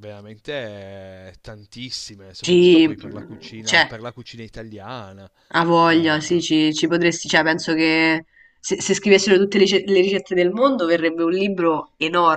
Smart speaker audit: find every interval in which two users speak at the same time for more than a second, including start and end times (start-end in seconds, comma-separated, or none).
2.4-3.9